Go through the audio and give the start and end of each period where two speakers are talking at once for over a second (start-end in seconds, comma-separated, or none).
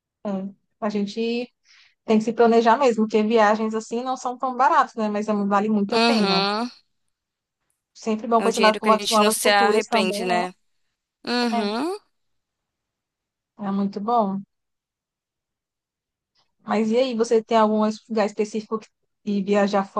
8.4-10.4